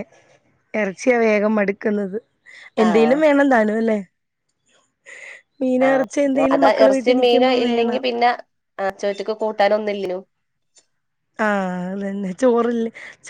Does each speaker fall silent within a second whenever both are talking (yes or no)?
no